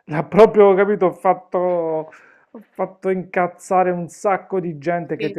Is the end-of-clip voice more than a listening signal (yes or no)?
no